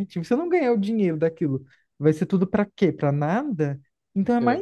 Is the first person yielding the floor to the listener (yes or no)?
no